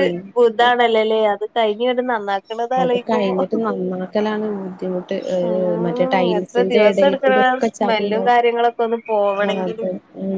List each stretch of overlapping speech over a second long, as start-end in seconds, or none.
5.8-8.3